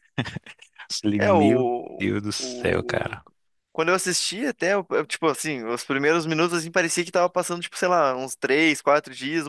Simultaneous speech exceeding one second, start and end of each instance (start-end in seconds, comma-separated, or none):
1.2-3.2